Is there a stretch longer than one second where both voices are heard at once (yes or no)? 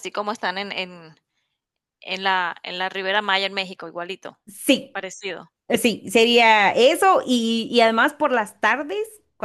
no